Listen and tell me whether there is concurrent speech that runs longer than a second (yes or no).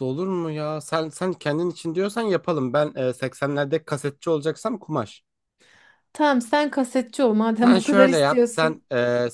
yes